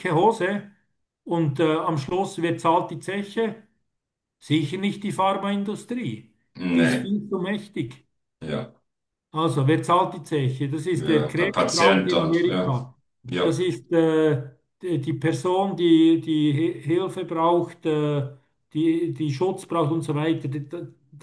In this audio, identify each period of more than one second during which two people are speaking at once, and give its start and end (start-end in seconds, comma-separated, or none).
10.9-12.7